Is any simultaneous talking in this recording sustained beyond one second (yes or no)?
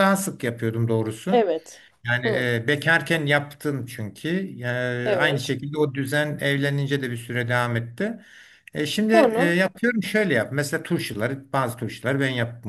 no